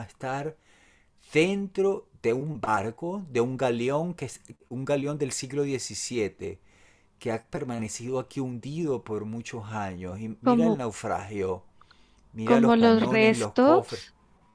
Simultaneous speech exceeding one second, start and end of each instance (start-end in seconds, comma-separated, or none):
12.4-14.0